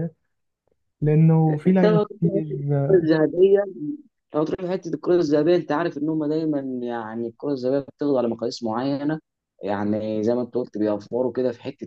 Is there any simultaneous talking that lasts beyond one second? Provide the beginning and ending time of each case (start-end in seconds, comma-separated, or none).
1.7-3.0